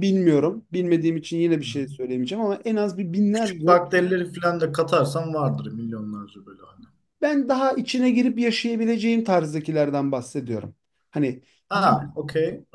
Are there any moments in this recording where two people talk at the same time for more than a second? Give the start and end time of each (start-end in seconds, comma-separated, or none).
none